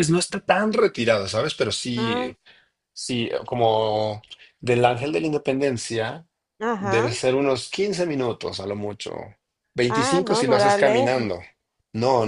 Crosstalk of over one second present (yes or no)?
yes